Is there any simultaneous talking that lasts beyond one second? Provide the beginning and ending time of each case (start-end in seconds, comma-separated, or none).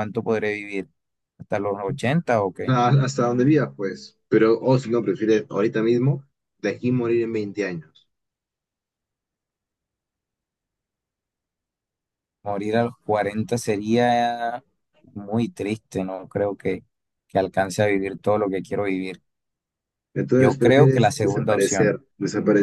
20.3-22.0